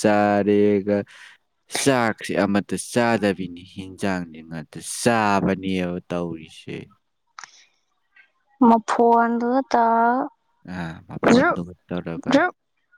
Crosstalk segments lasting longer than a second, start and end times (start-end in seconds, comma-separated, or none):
none